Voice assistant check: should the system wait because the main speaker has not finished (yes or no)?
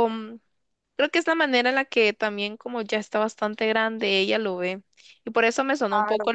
yes